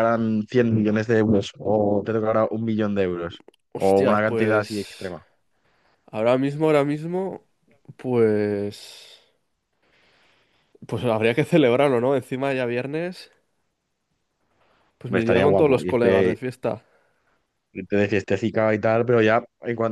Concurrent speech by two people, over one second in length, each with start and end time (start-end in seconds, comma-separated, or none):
3.7-5.1, 15.1-16.4